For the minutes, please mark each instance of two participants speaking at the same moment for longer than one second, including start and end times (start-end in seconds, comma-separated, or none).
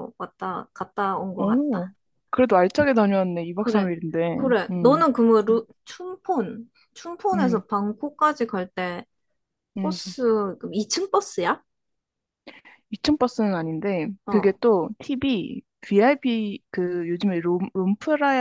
none